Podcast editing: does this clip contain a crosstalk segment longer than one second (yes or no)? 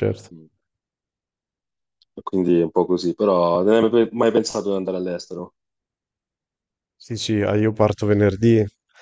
no